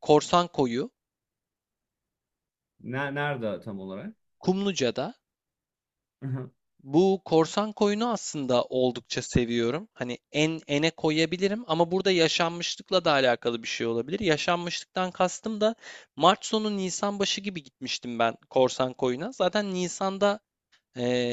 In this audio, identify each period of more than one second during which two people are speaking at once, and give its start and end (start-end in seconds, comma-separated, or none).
none